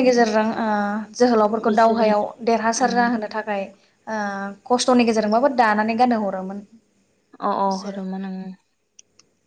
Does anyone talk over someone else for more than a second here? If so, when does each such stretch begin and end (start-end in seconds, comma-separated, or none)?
none